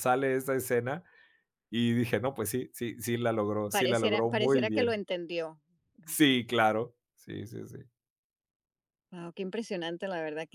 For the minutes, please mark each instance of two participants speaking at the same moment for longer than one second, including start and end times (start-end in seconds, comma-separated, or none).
3.7-5.0